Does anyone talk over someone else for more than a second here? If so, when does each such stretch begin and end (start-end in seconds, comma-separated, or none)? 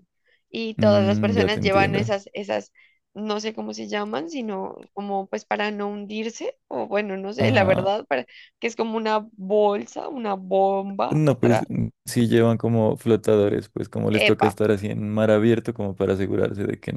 0.8-2.2